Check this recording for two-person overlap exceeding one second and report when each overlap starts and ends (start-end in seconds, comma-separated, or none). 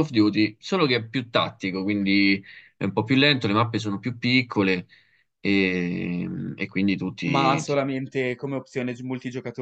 none